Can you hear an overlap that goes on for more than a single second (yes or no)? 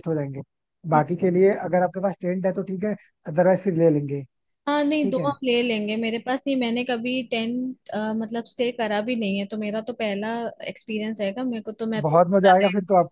no